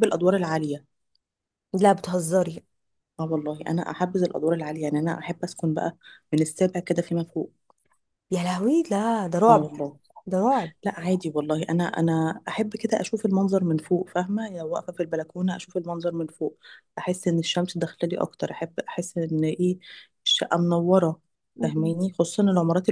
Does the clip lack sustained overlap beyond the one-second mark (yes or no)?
yes